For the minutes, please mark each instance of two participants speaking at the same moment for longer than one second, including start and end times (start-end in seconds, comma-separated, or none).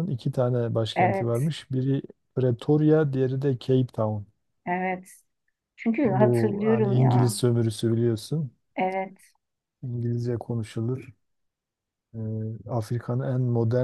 6.0-7.4